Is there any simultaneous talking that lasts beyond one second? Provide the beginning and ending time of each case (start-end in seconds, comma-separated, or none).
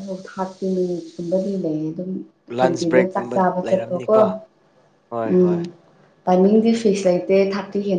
2.6-4.2